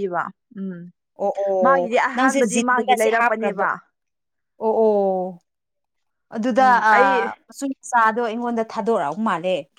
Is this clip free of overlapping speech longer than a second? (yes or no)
no